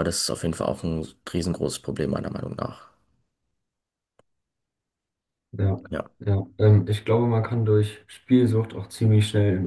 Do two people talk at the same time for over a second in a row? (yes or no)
no